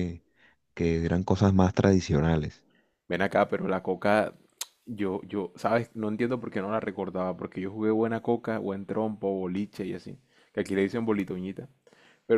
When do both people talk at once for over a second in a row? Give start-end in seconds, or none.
none